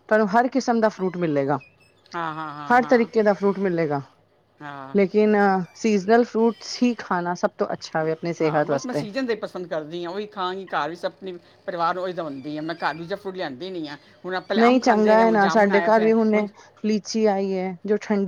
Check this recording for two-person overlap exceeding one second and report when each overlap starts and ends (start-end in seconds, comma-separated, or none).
14.6-16.5